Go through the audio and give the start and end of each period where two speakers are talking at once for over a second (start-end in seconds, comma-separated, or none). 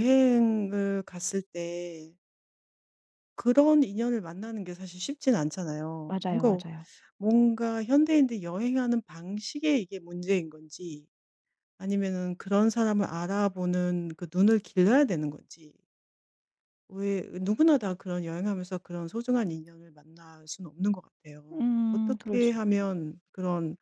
21.5-22.8